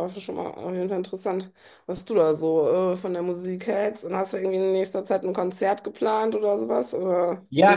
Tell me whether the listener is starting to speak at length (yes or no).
yes